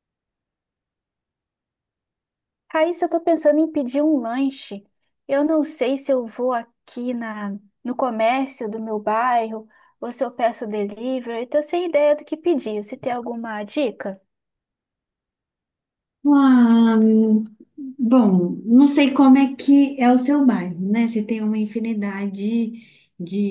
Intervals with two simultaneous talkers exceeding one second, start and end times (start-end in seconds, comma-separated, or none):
none